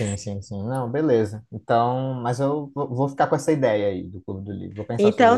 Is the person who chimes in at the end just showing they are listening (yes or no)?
no